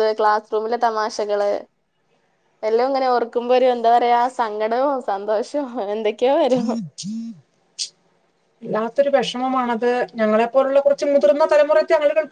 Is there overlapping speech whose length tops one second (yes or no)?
no